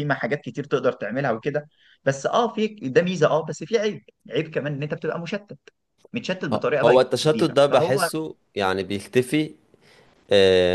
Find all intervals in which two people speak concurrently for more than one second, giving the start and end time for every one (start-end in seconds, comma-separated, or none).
6.5-8.1